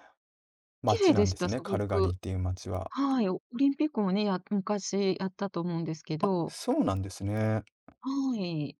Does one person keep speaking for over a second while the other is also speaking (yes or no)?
yes